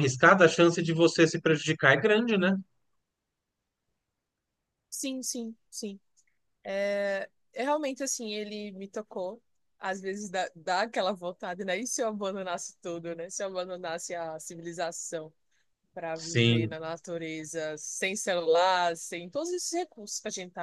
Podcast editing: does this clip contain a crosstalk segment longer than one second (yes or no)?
no